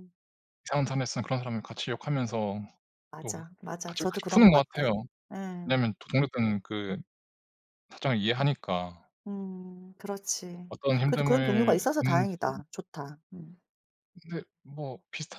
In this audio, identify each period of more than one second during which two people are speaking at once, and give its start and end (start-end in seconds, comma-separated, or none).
3.2-4.8, 10.7-12.3